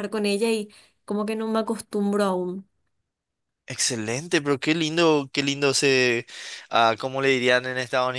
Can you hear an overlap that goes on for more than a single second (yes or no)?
no